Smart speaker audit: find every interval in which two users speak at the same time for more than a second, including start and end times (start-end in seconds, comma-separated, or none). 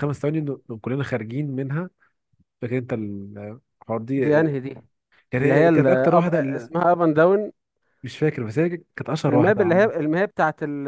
5.4-6.7